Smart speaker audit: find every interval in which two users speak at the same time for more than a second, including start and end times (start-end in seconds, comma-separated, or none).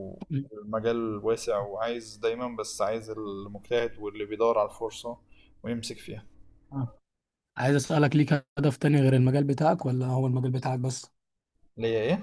none